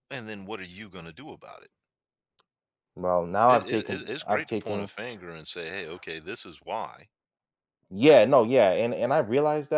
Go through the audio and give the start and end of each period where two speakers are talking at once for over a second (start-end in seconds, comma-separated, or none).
3.5-4.9